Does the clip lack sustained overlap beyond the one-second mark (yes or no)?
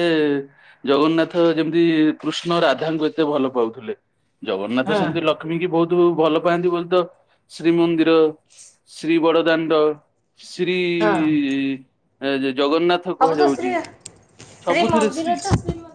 yes